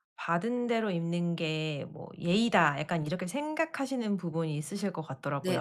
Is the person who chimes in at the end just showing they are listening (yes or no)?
no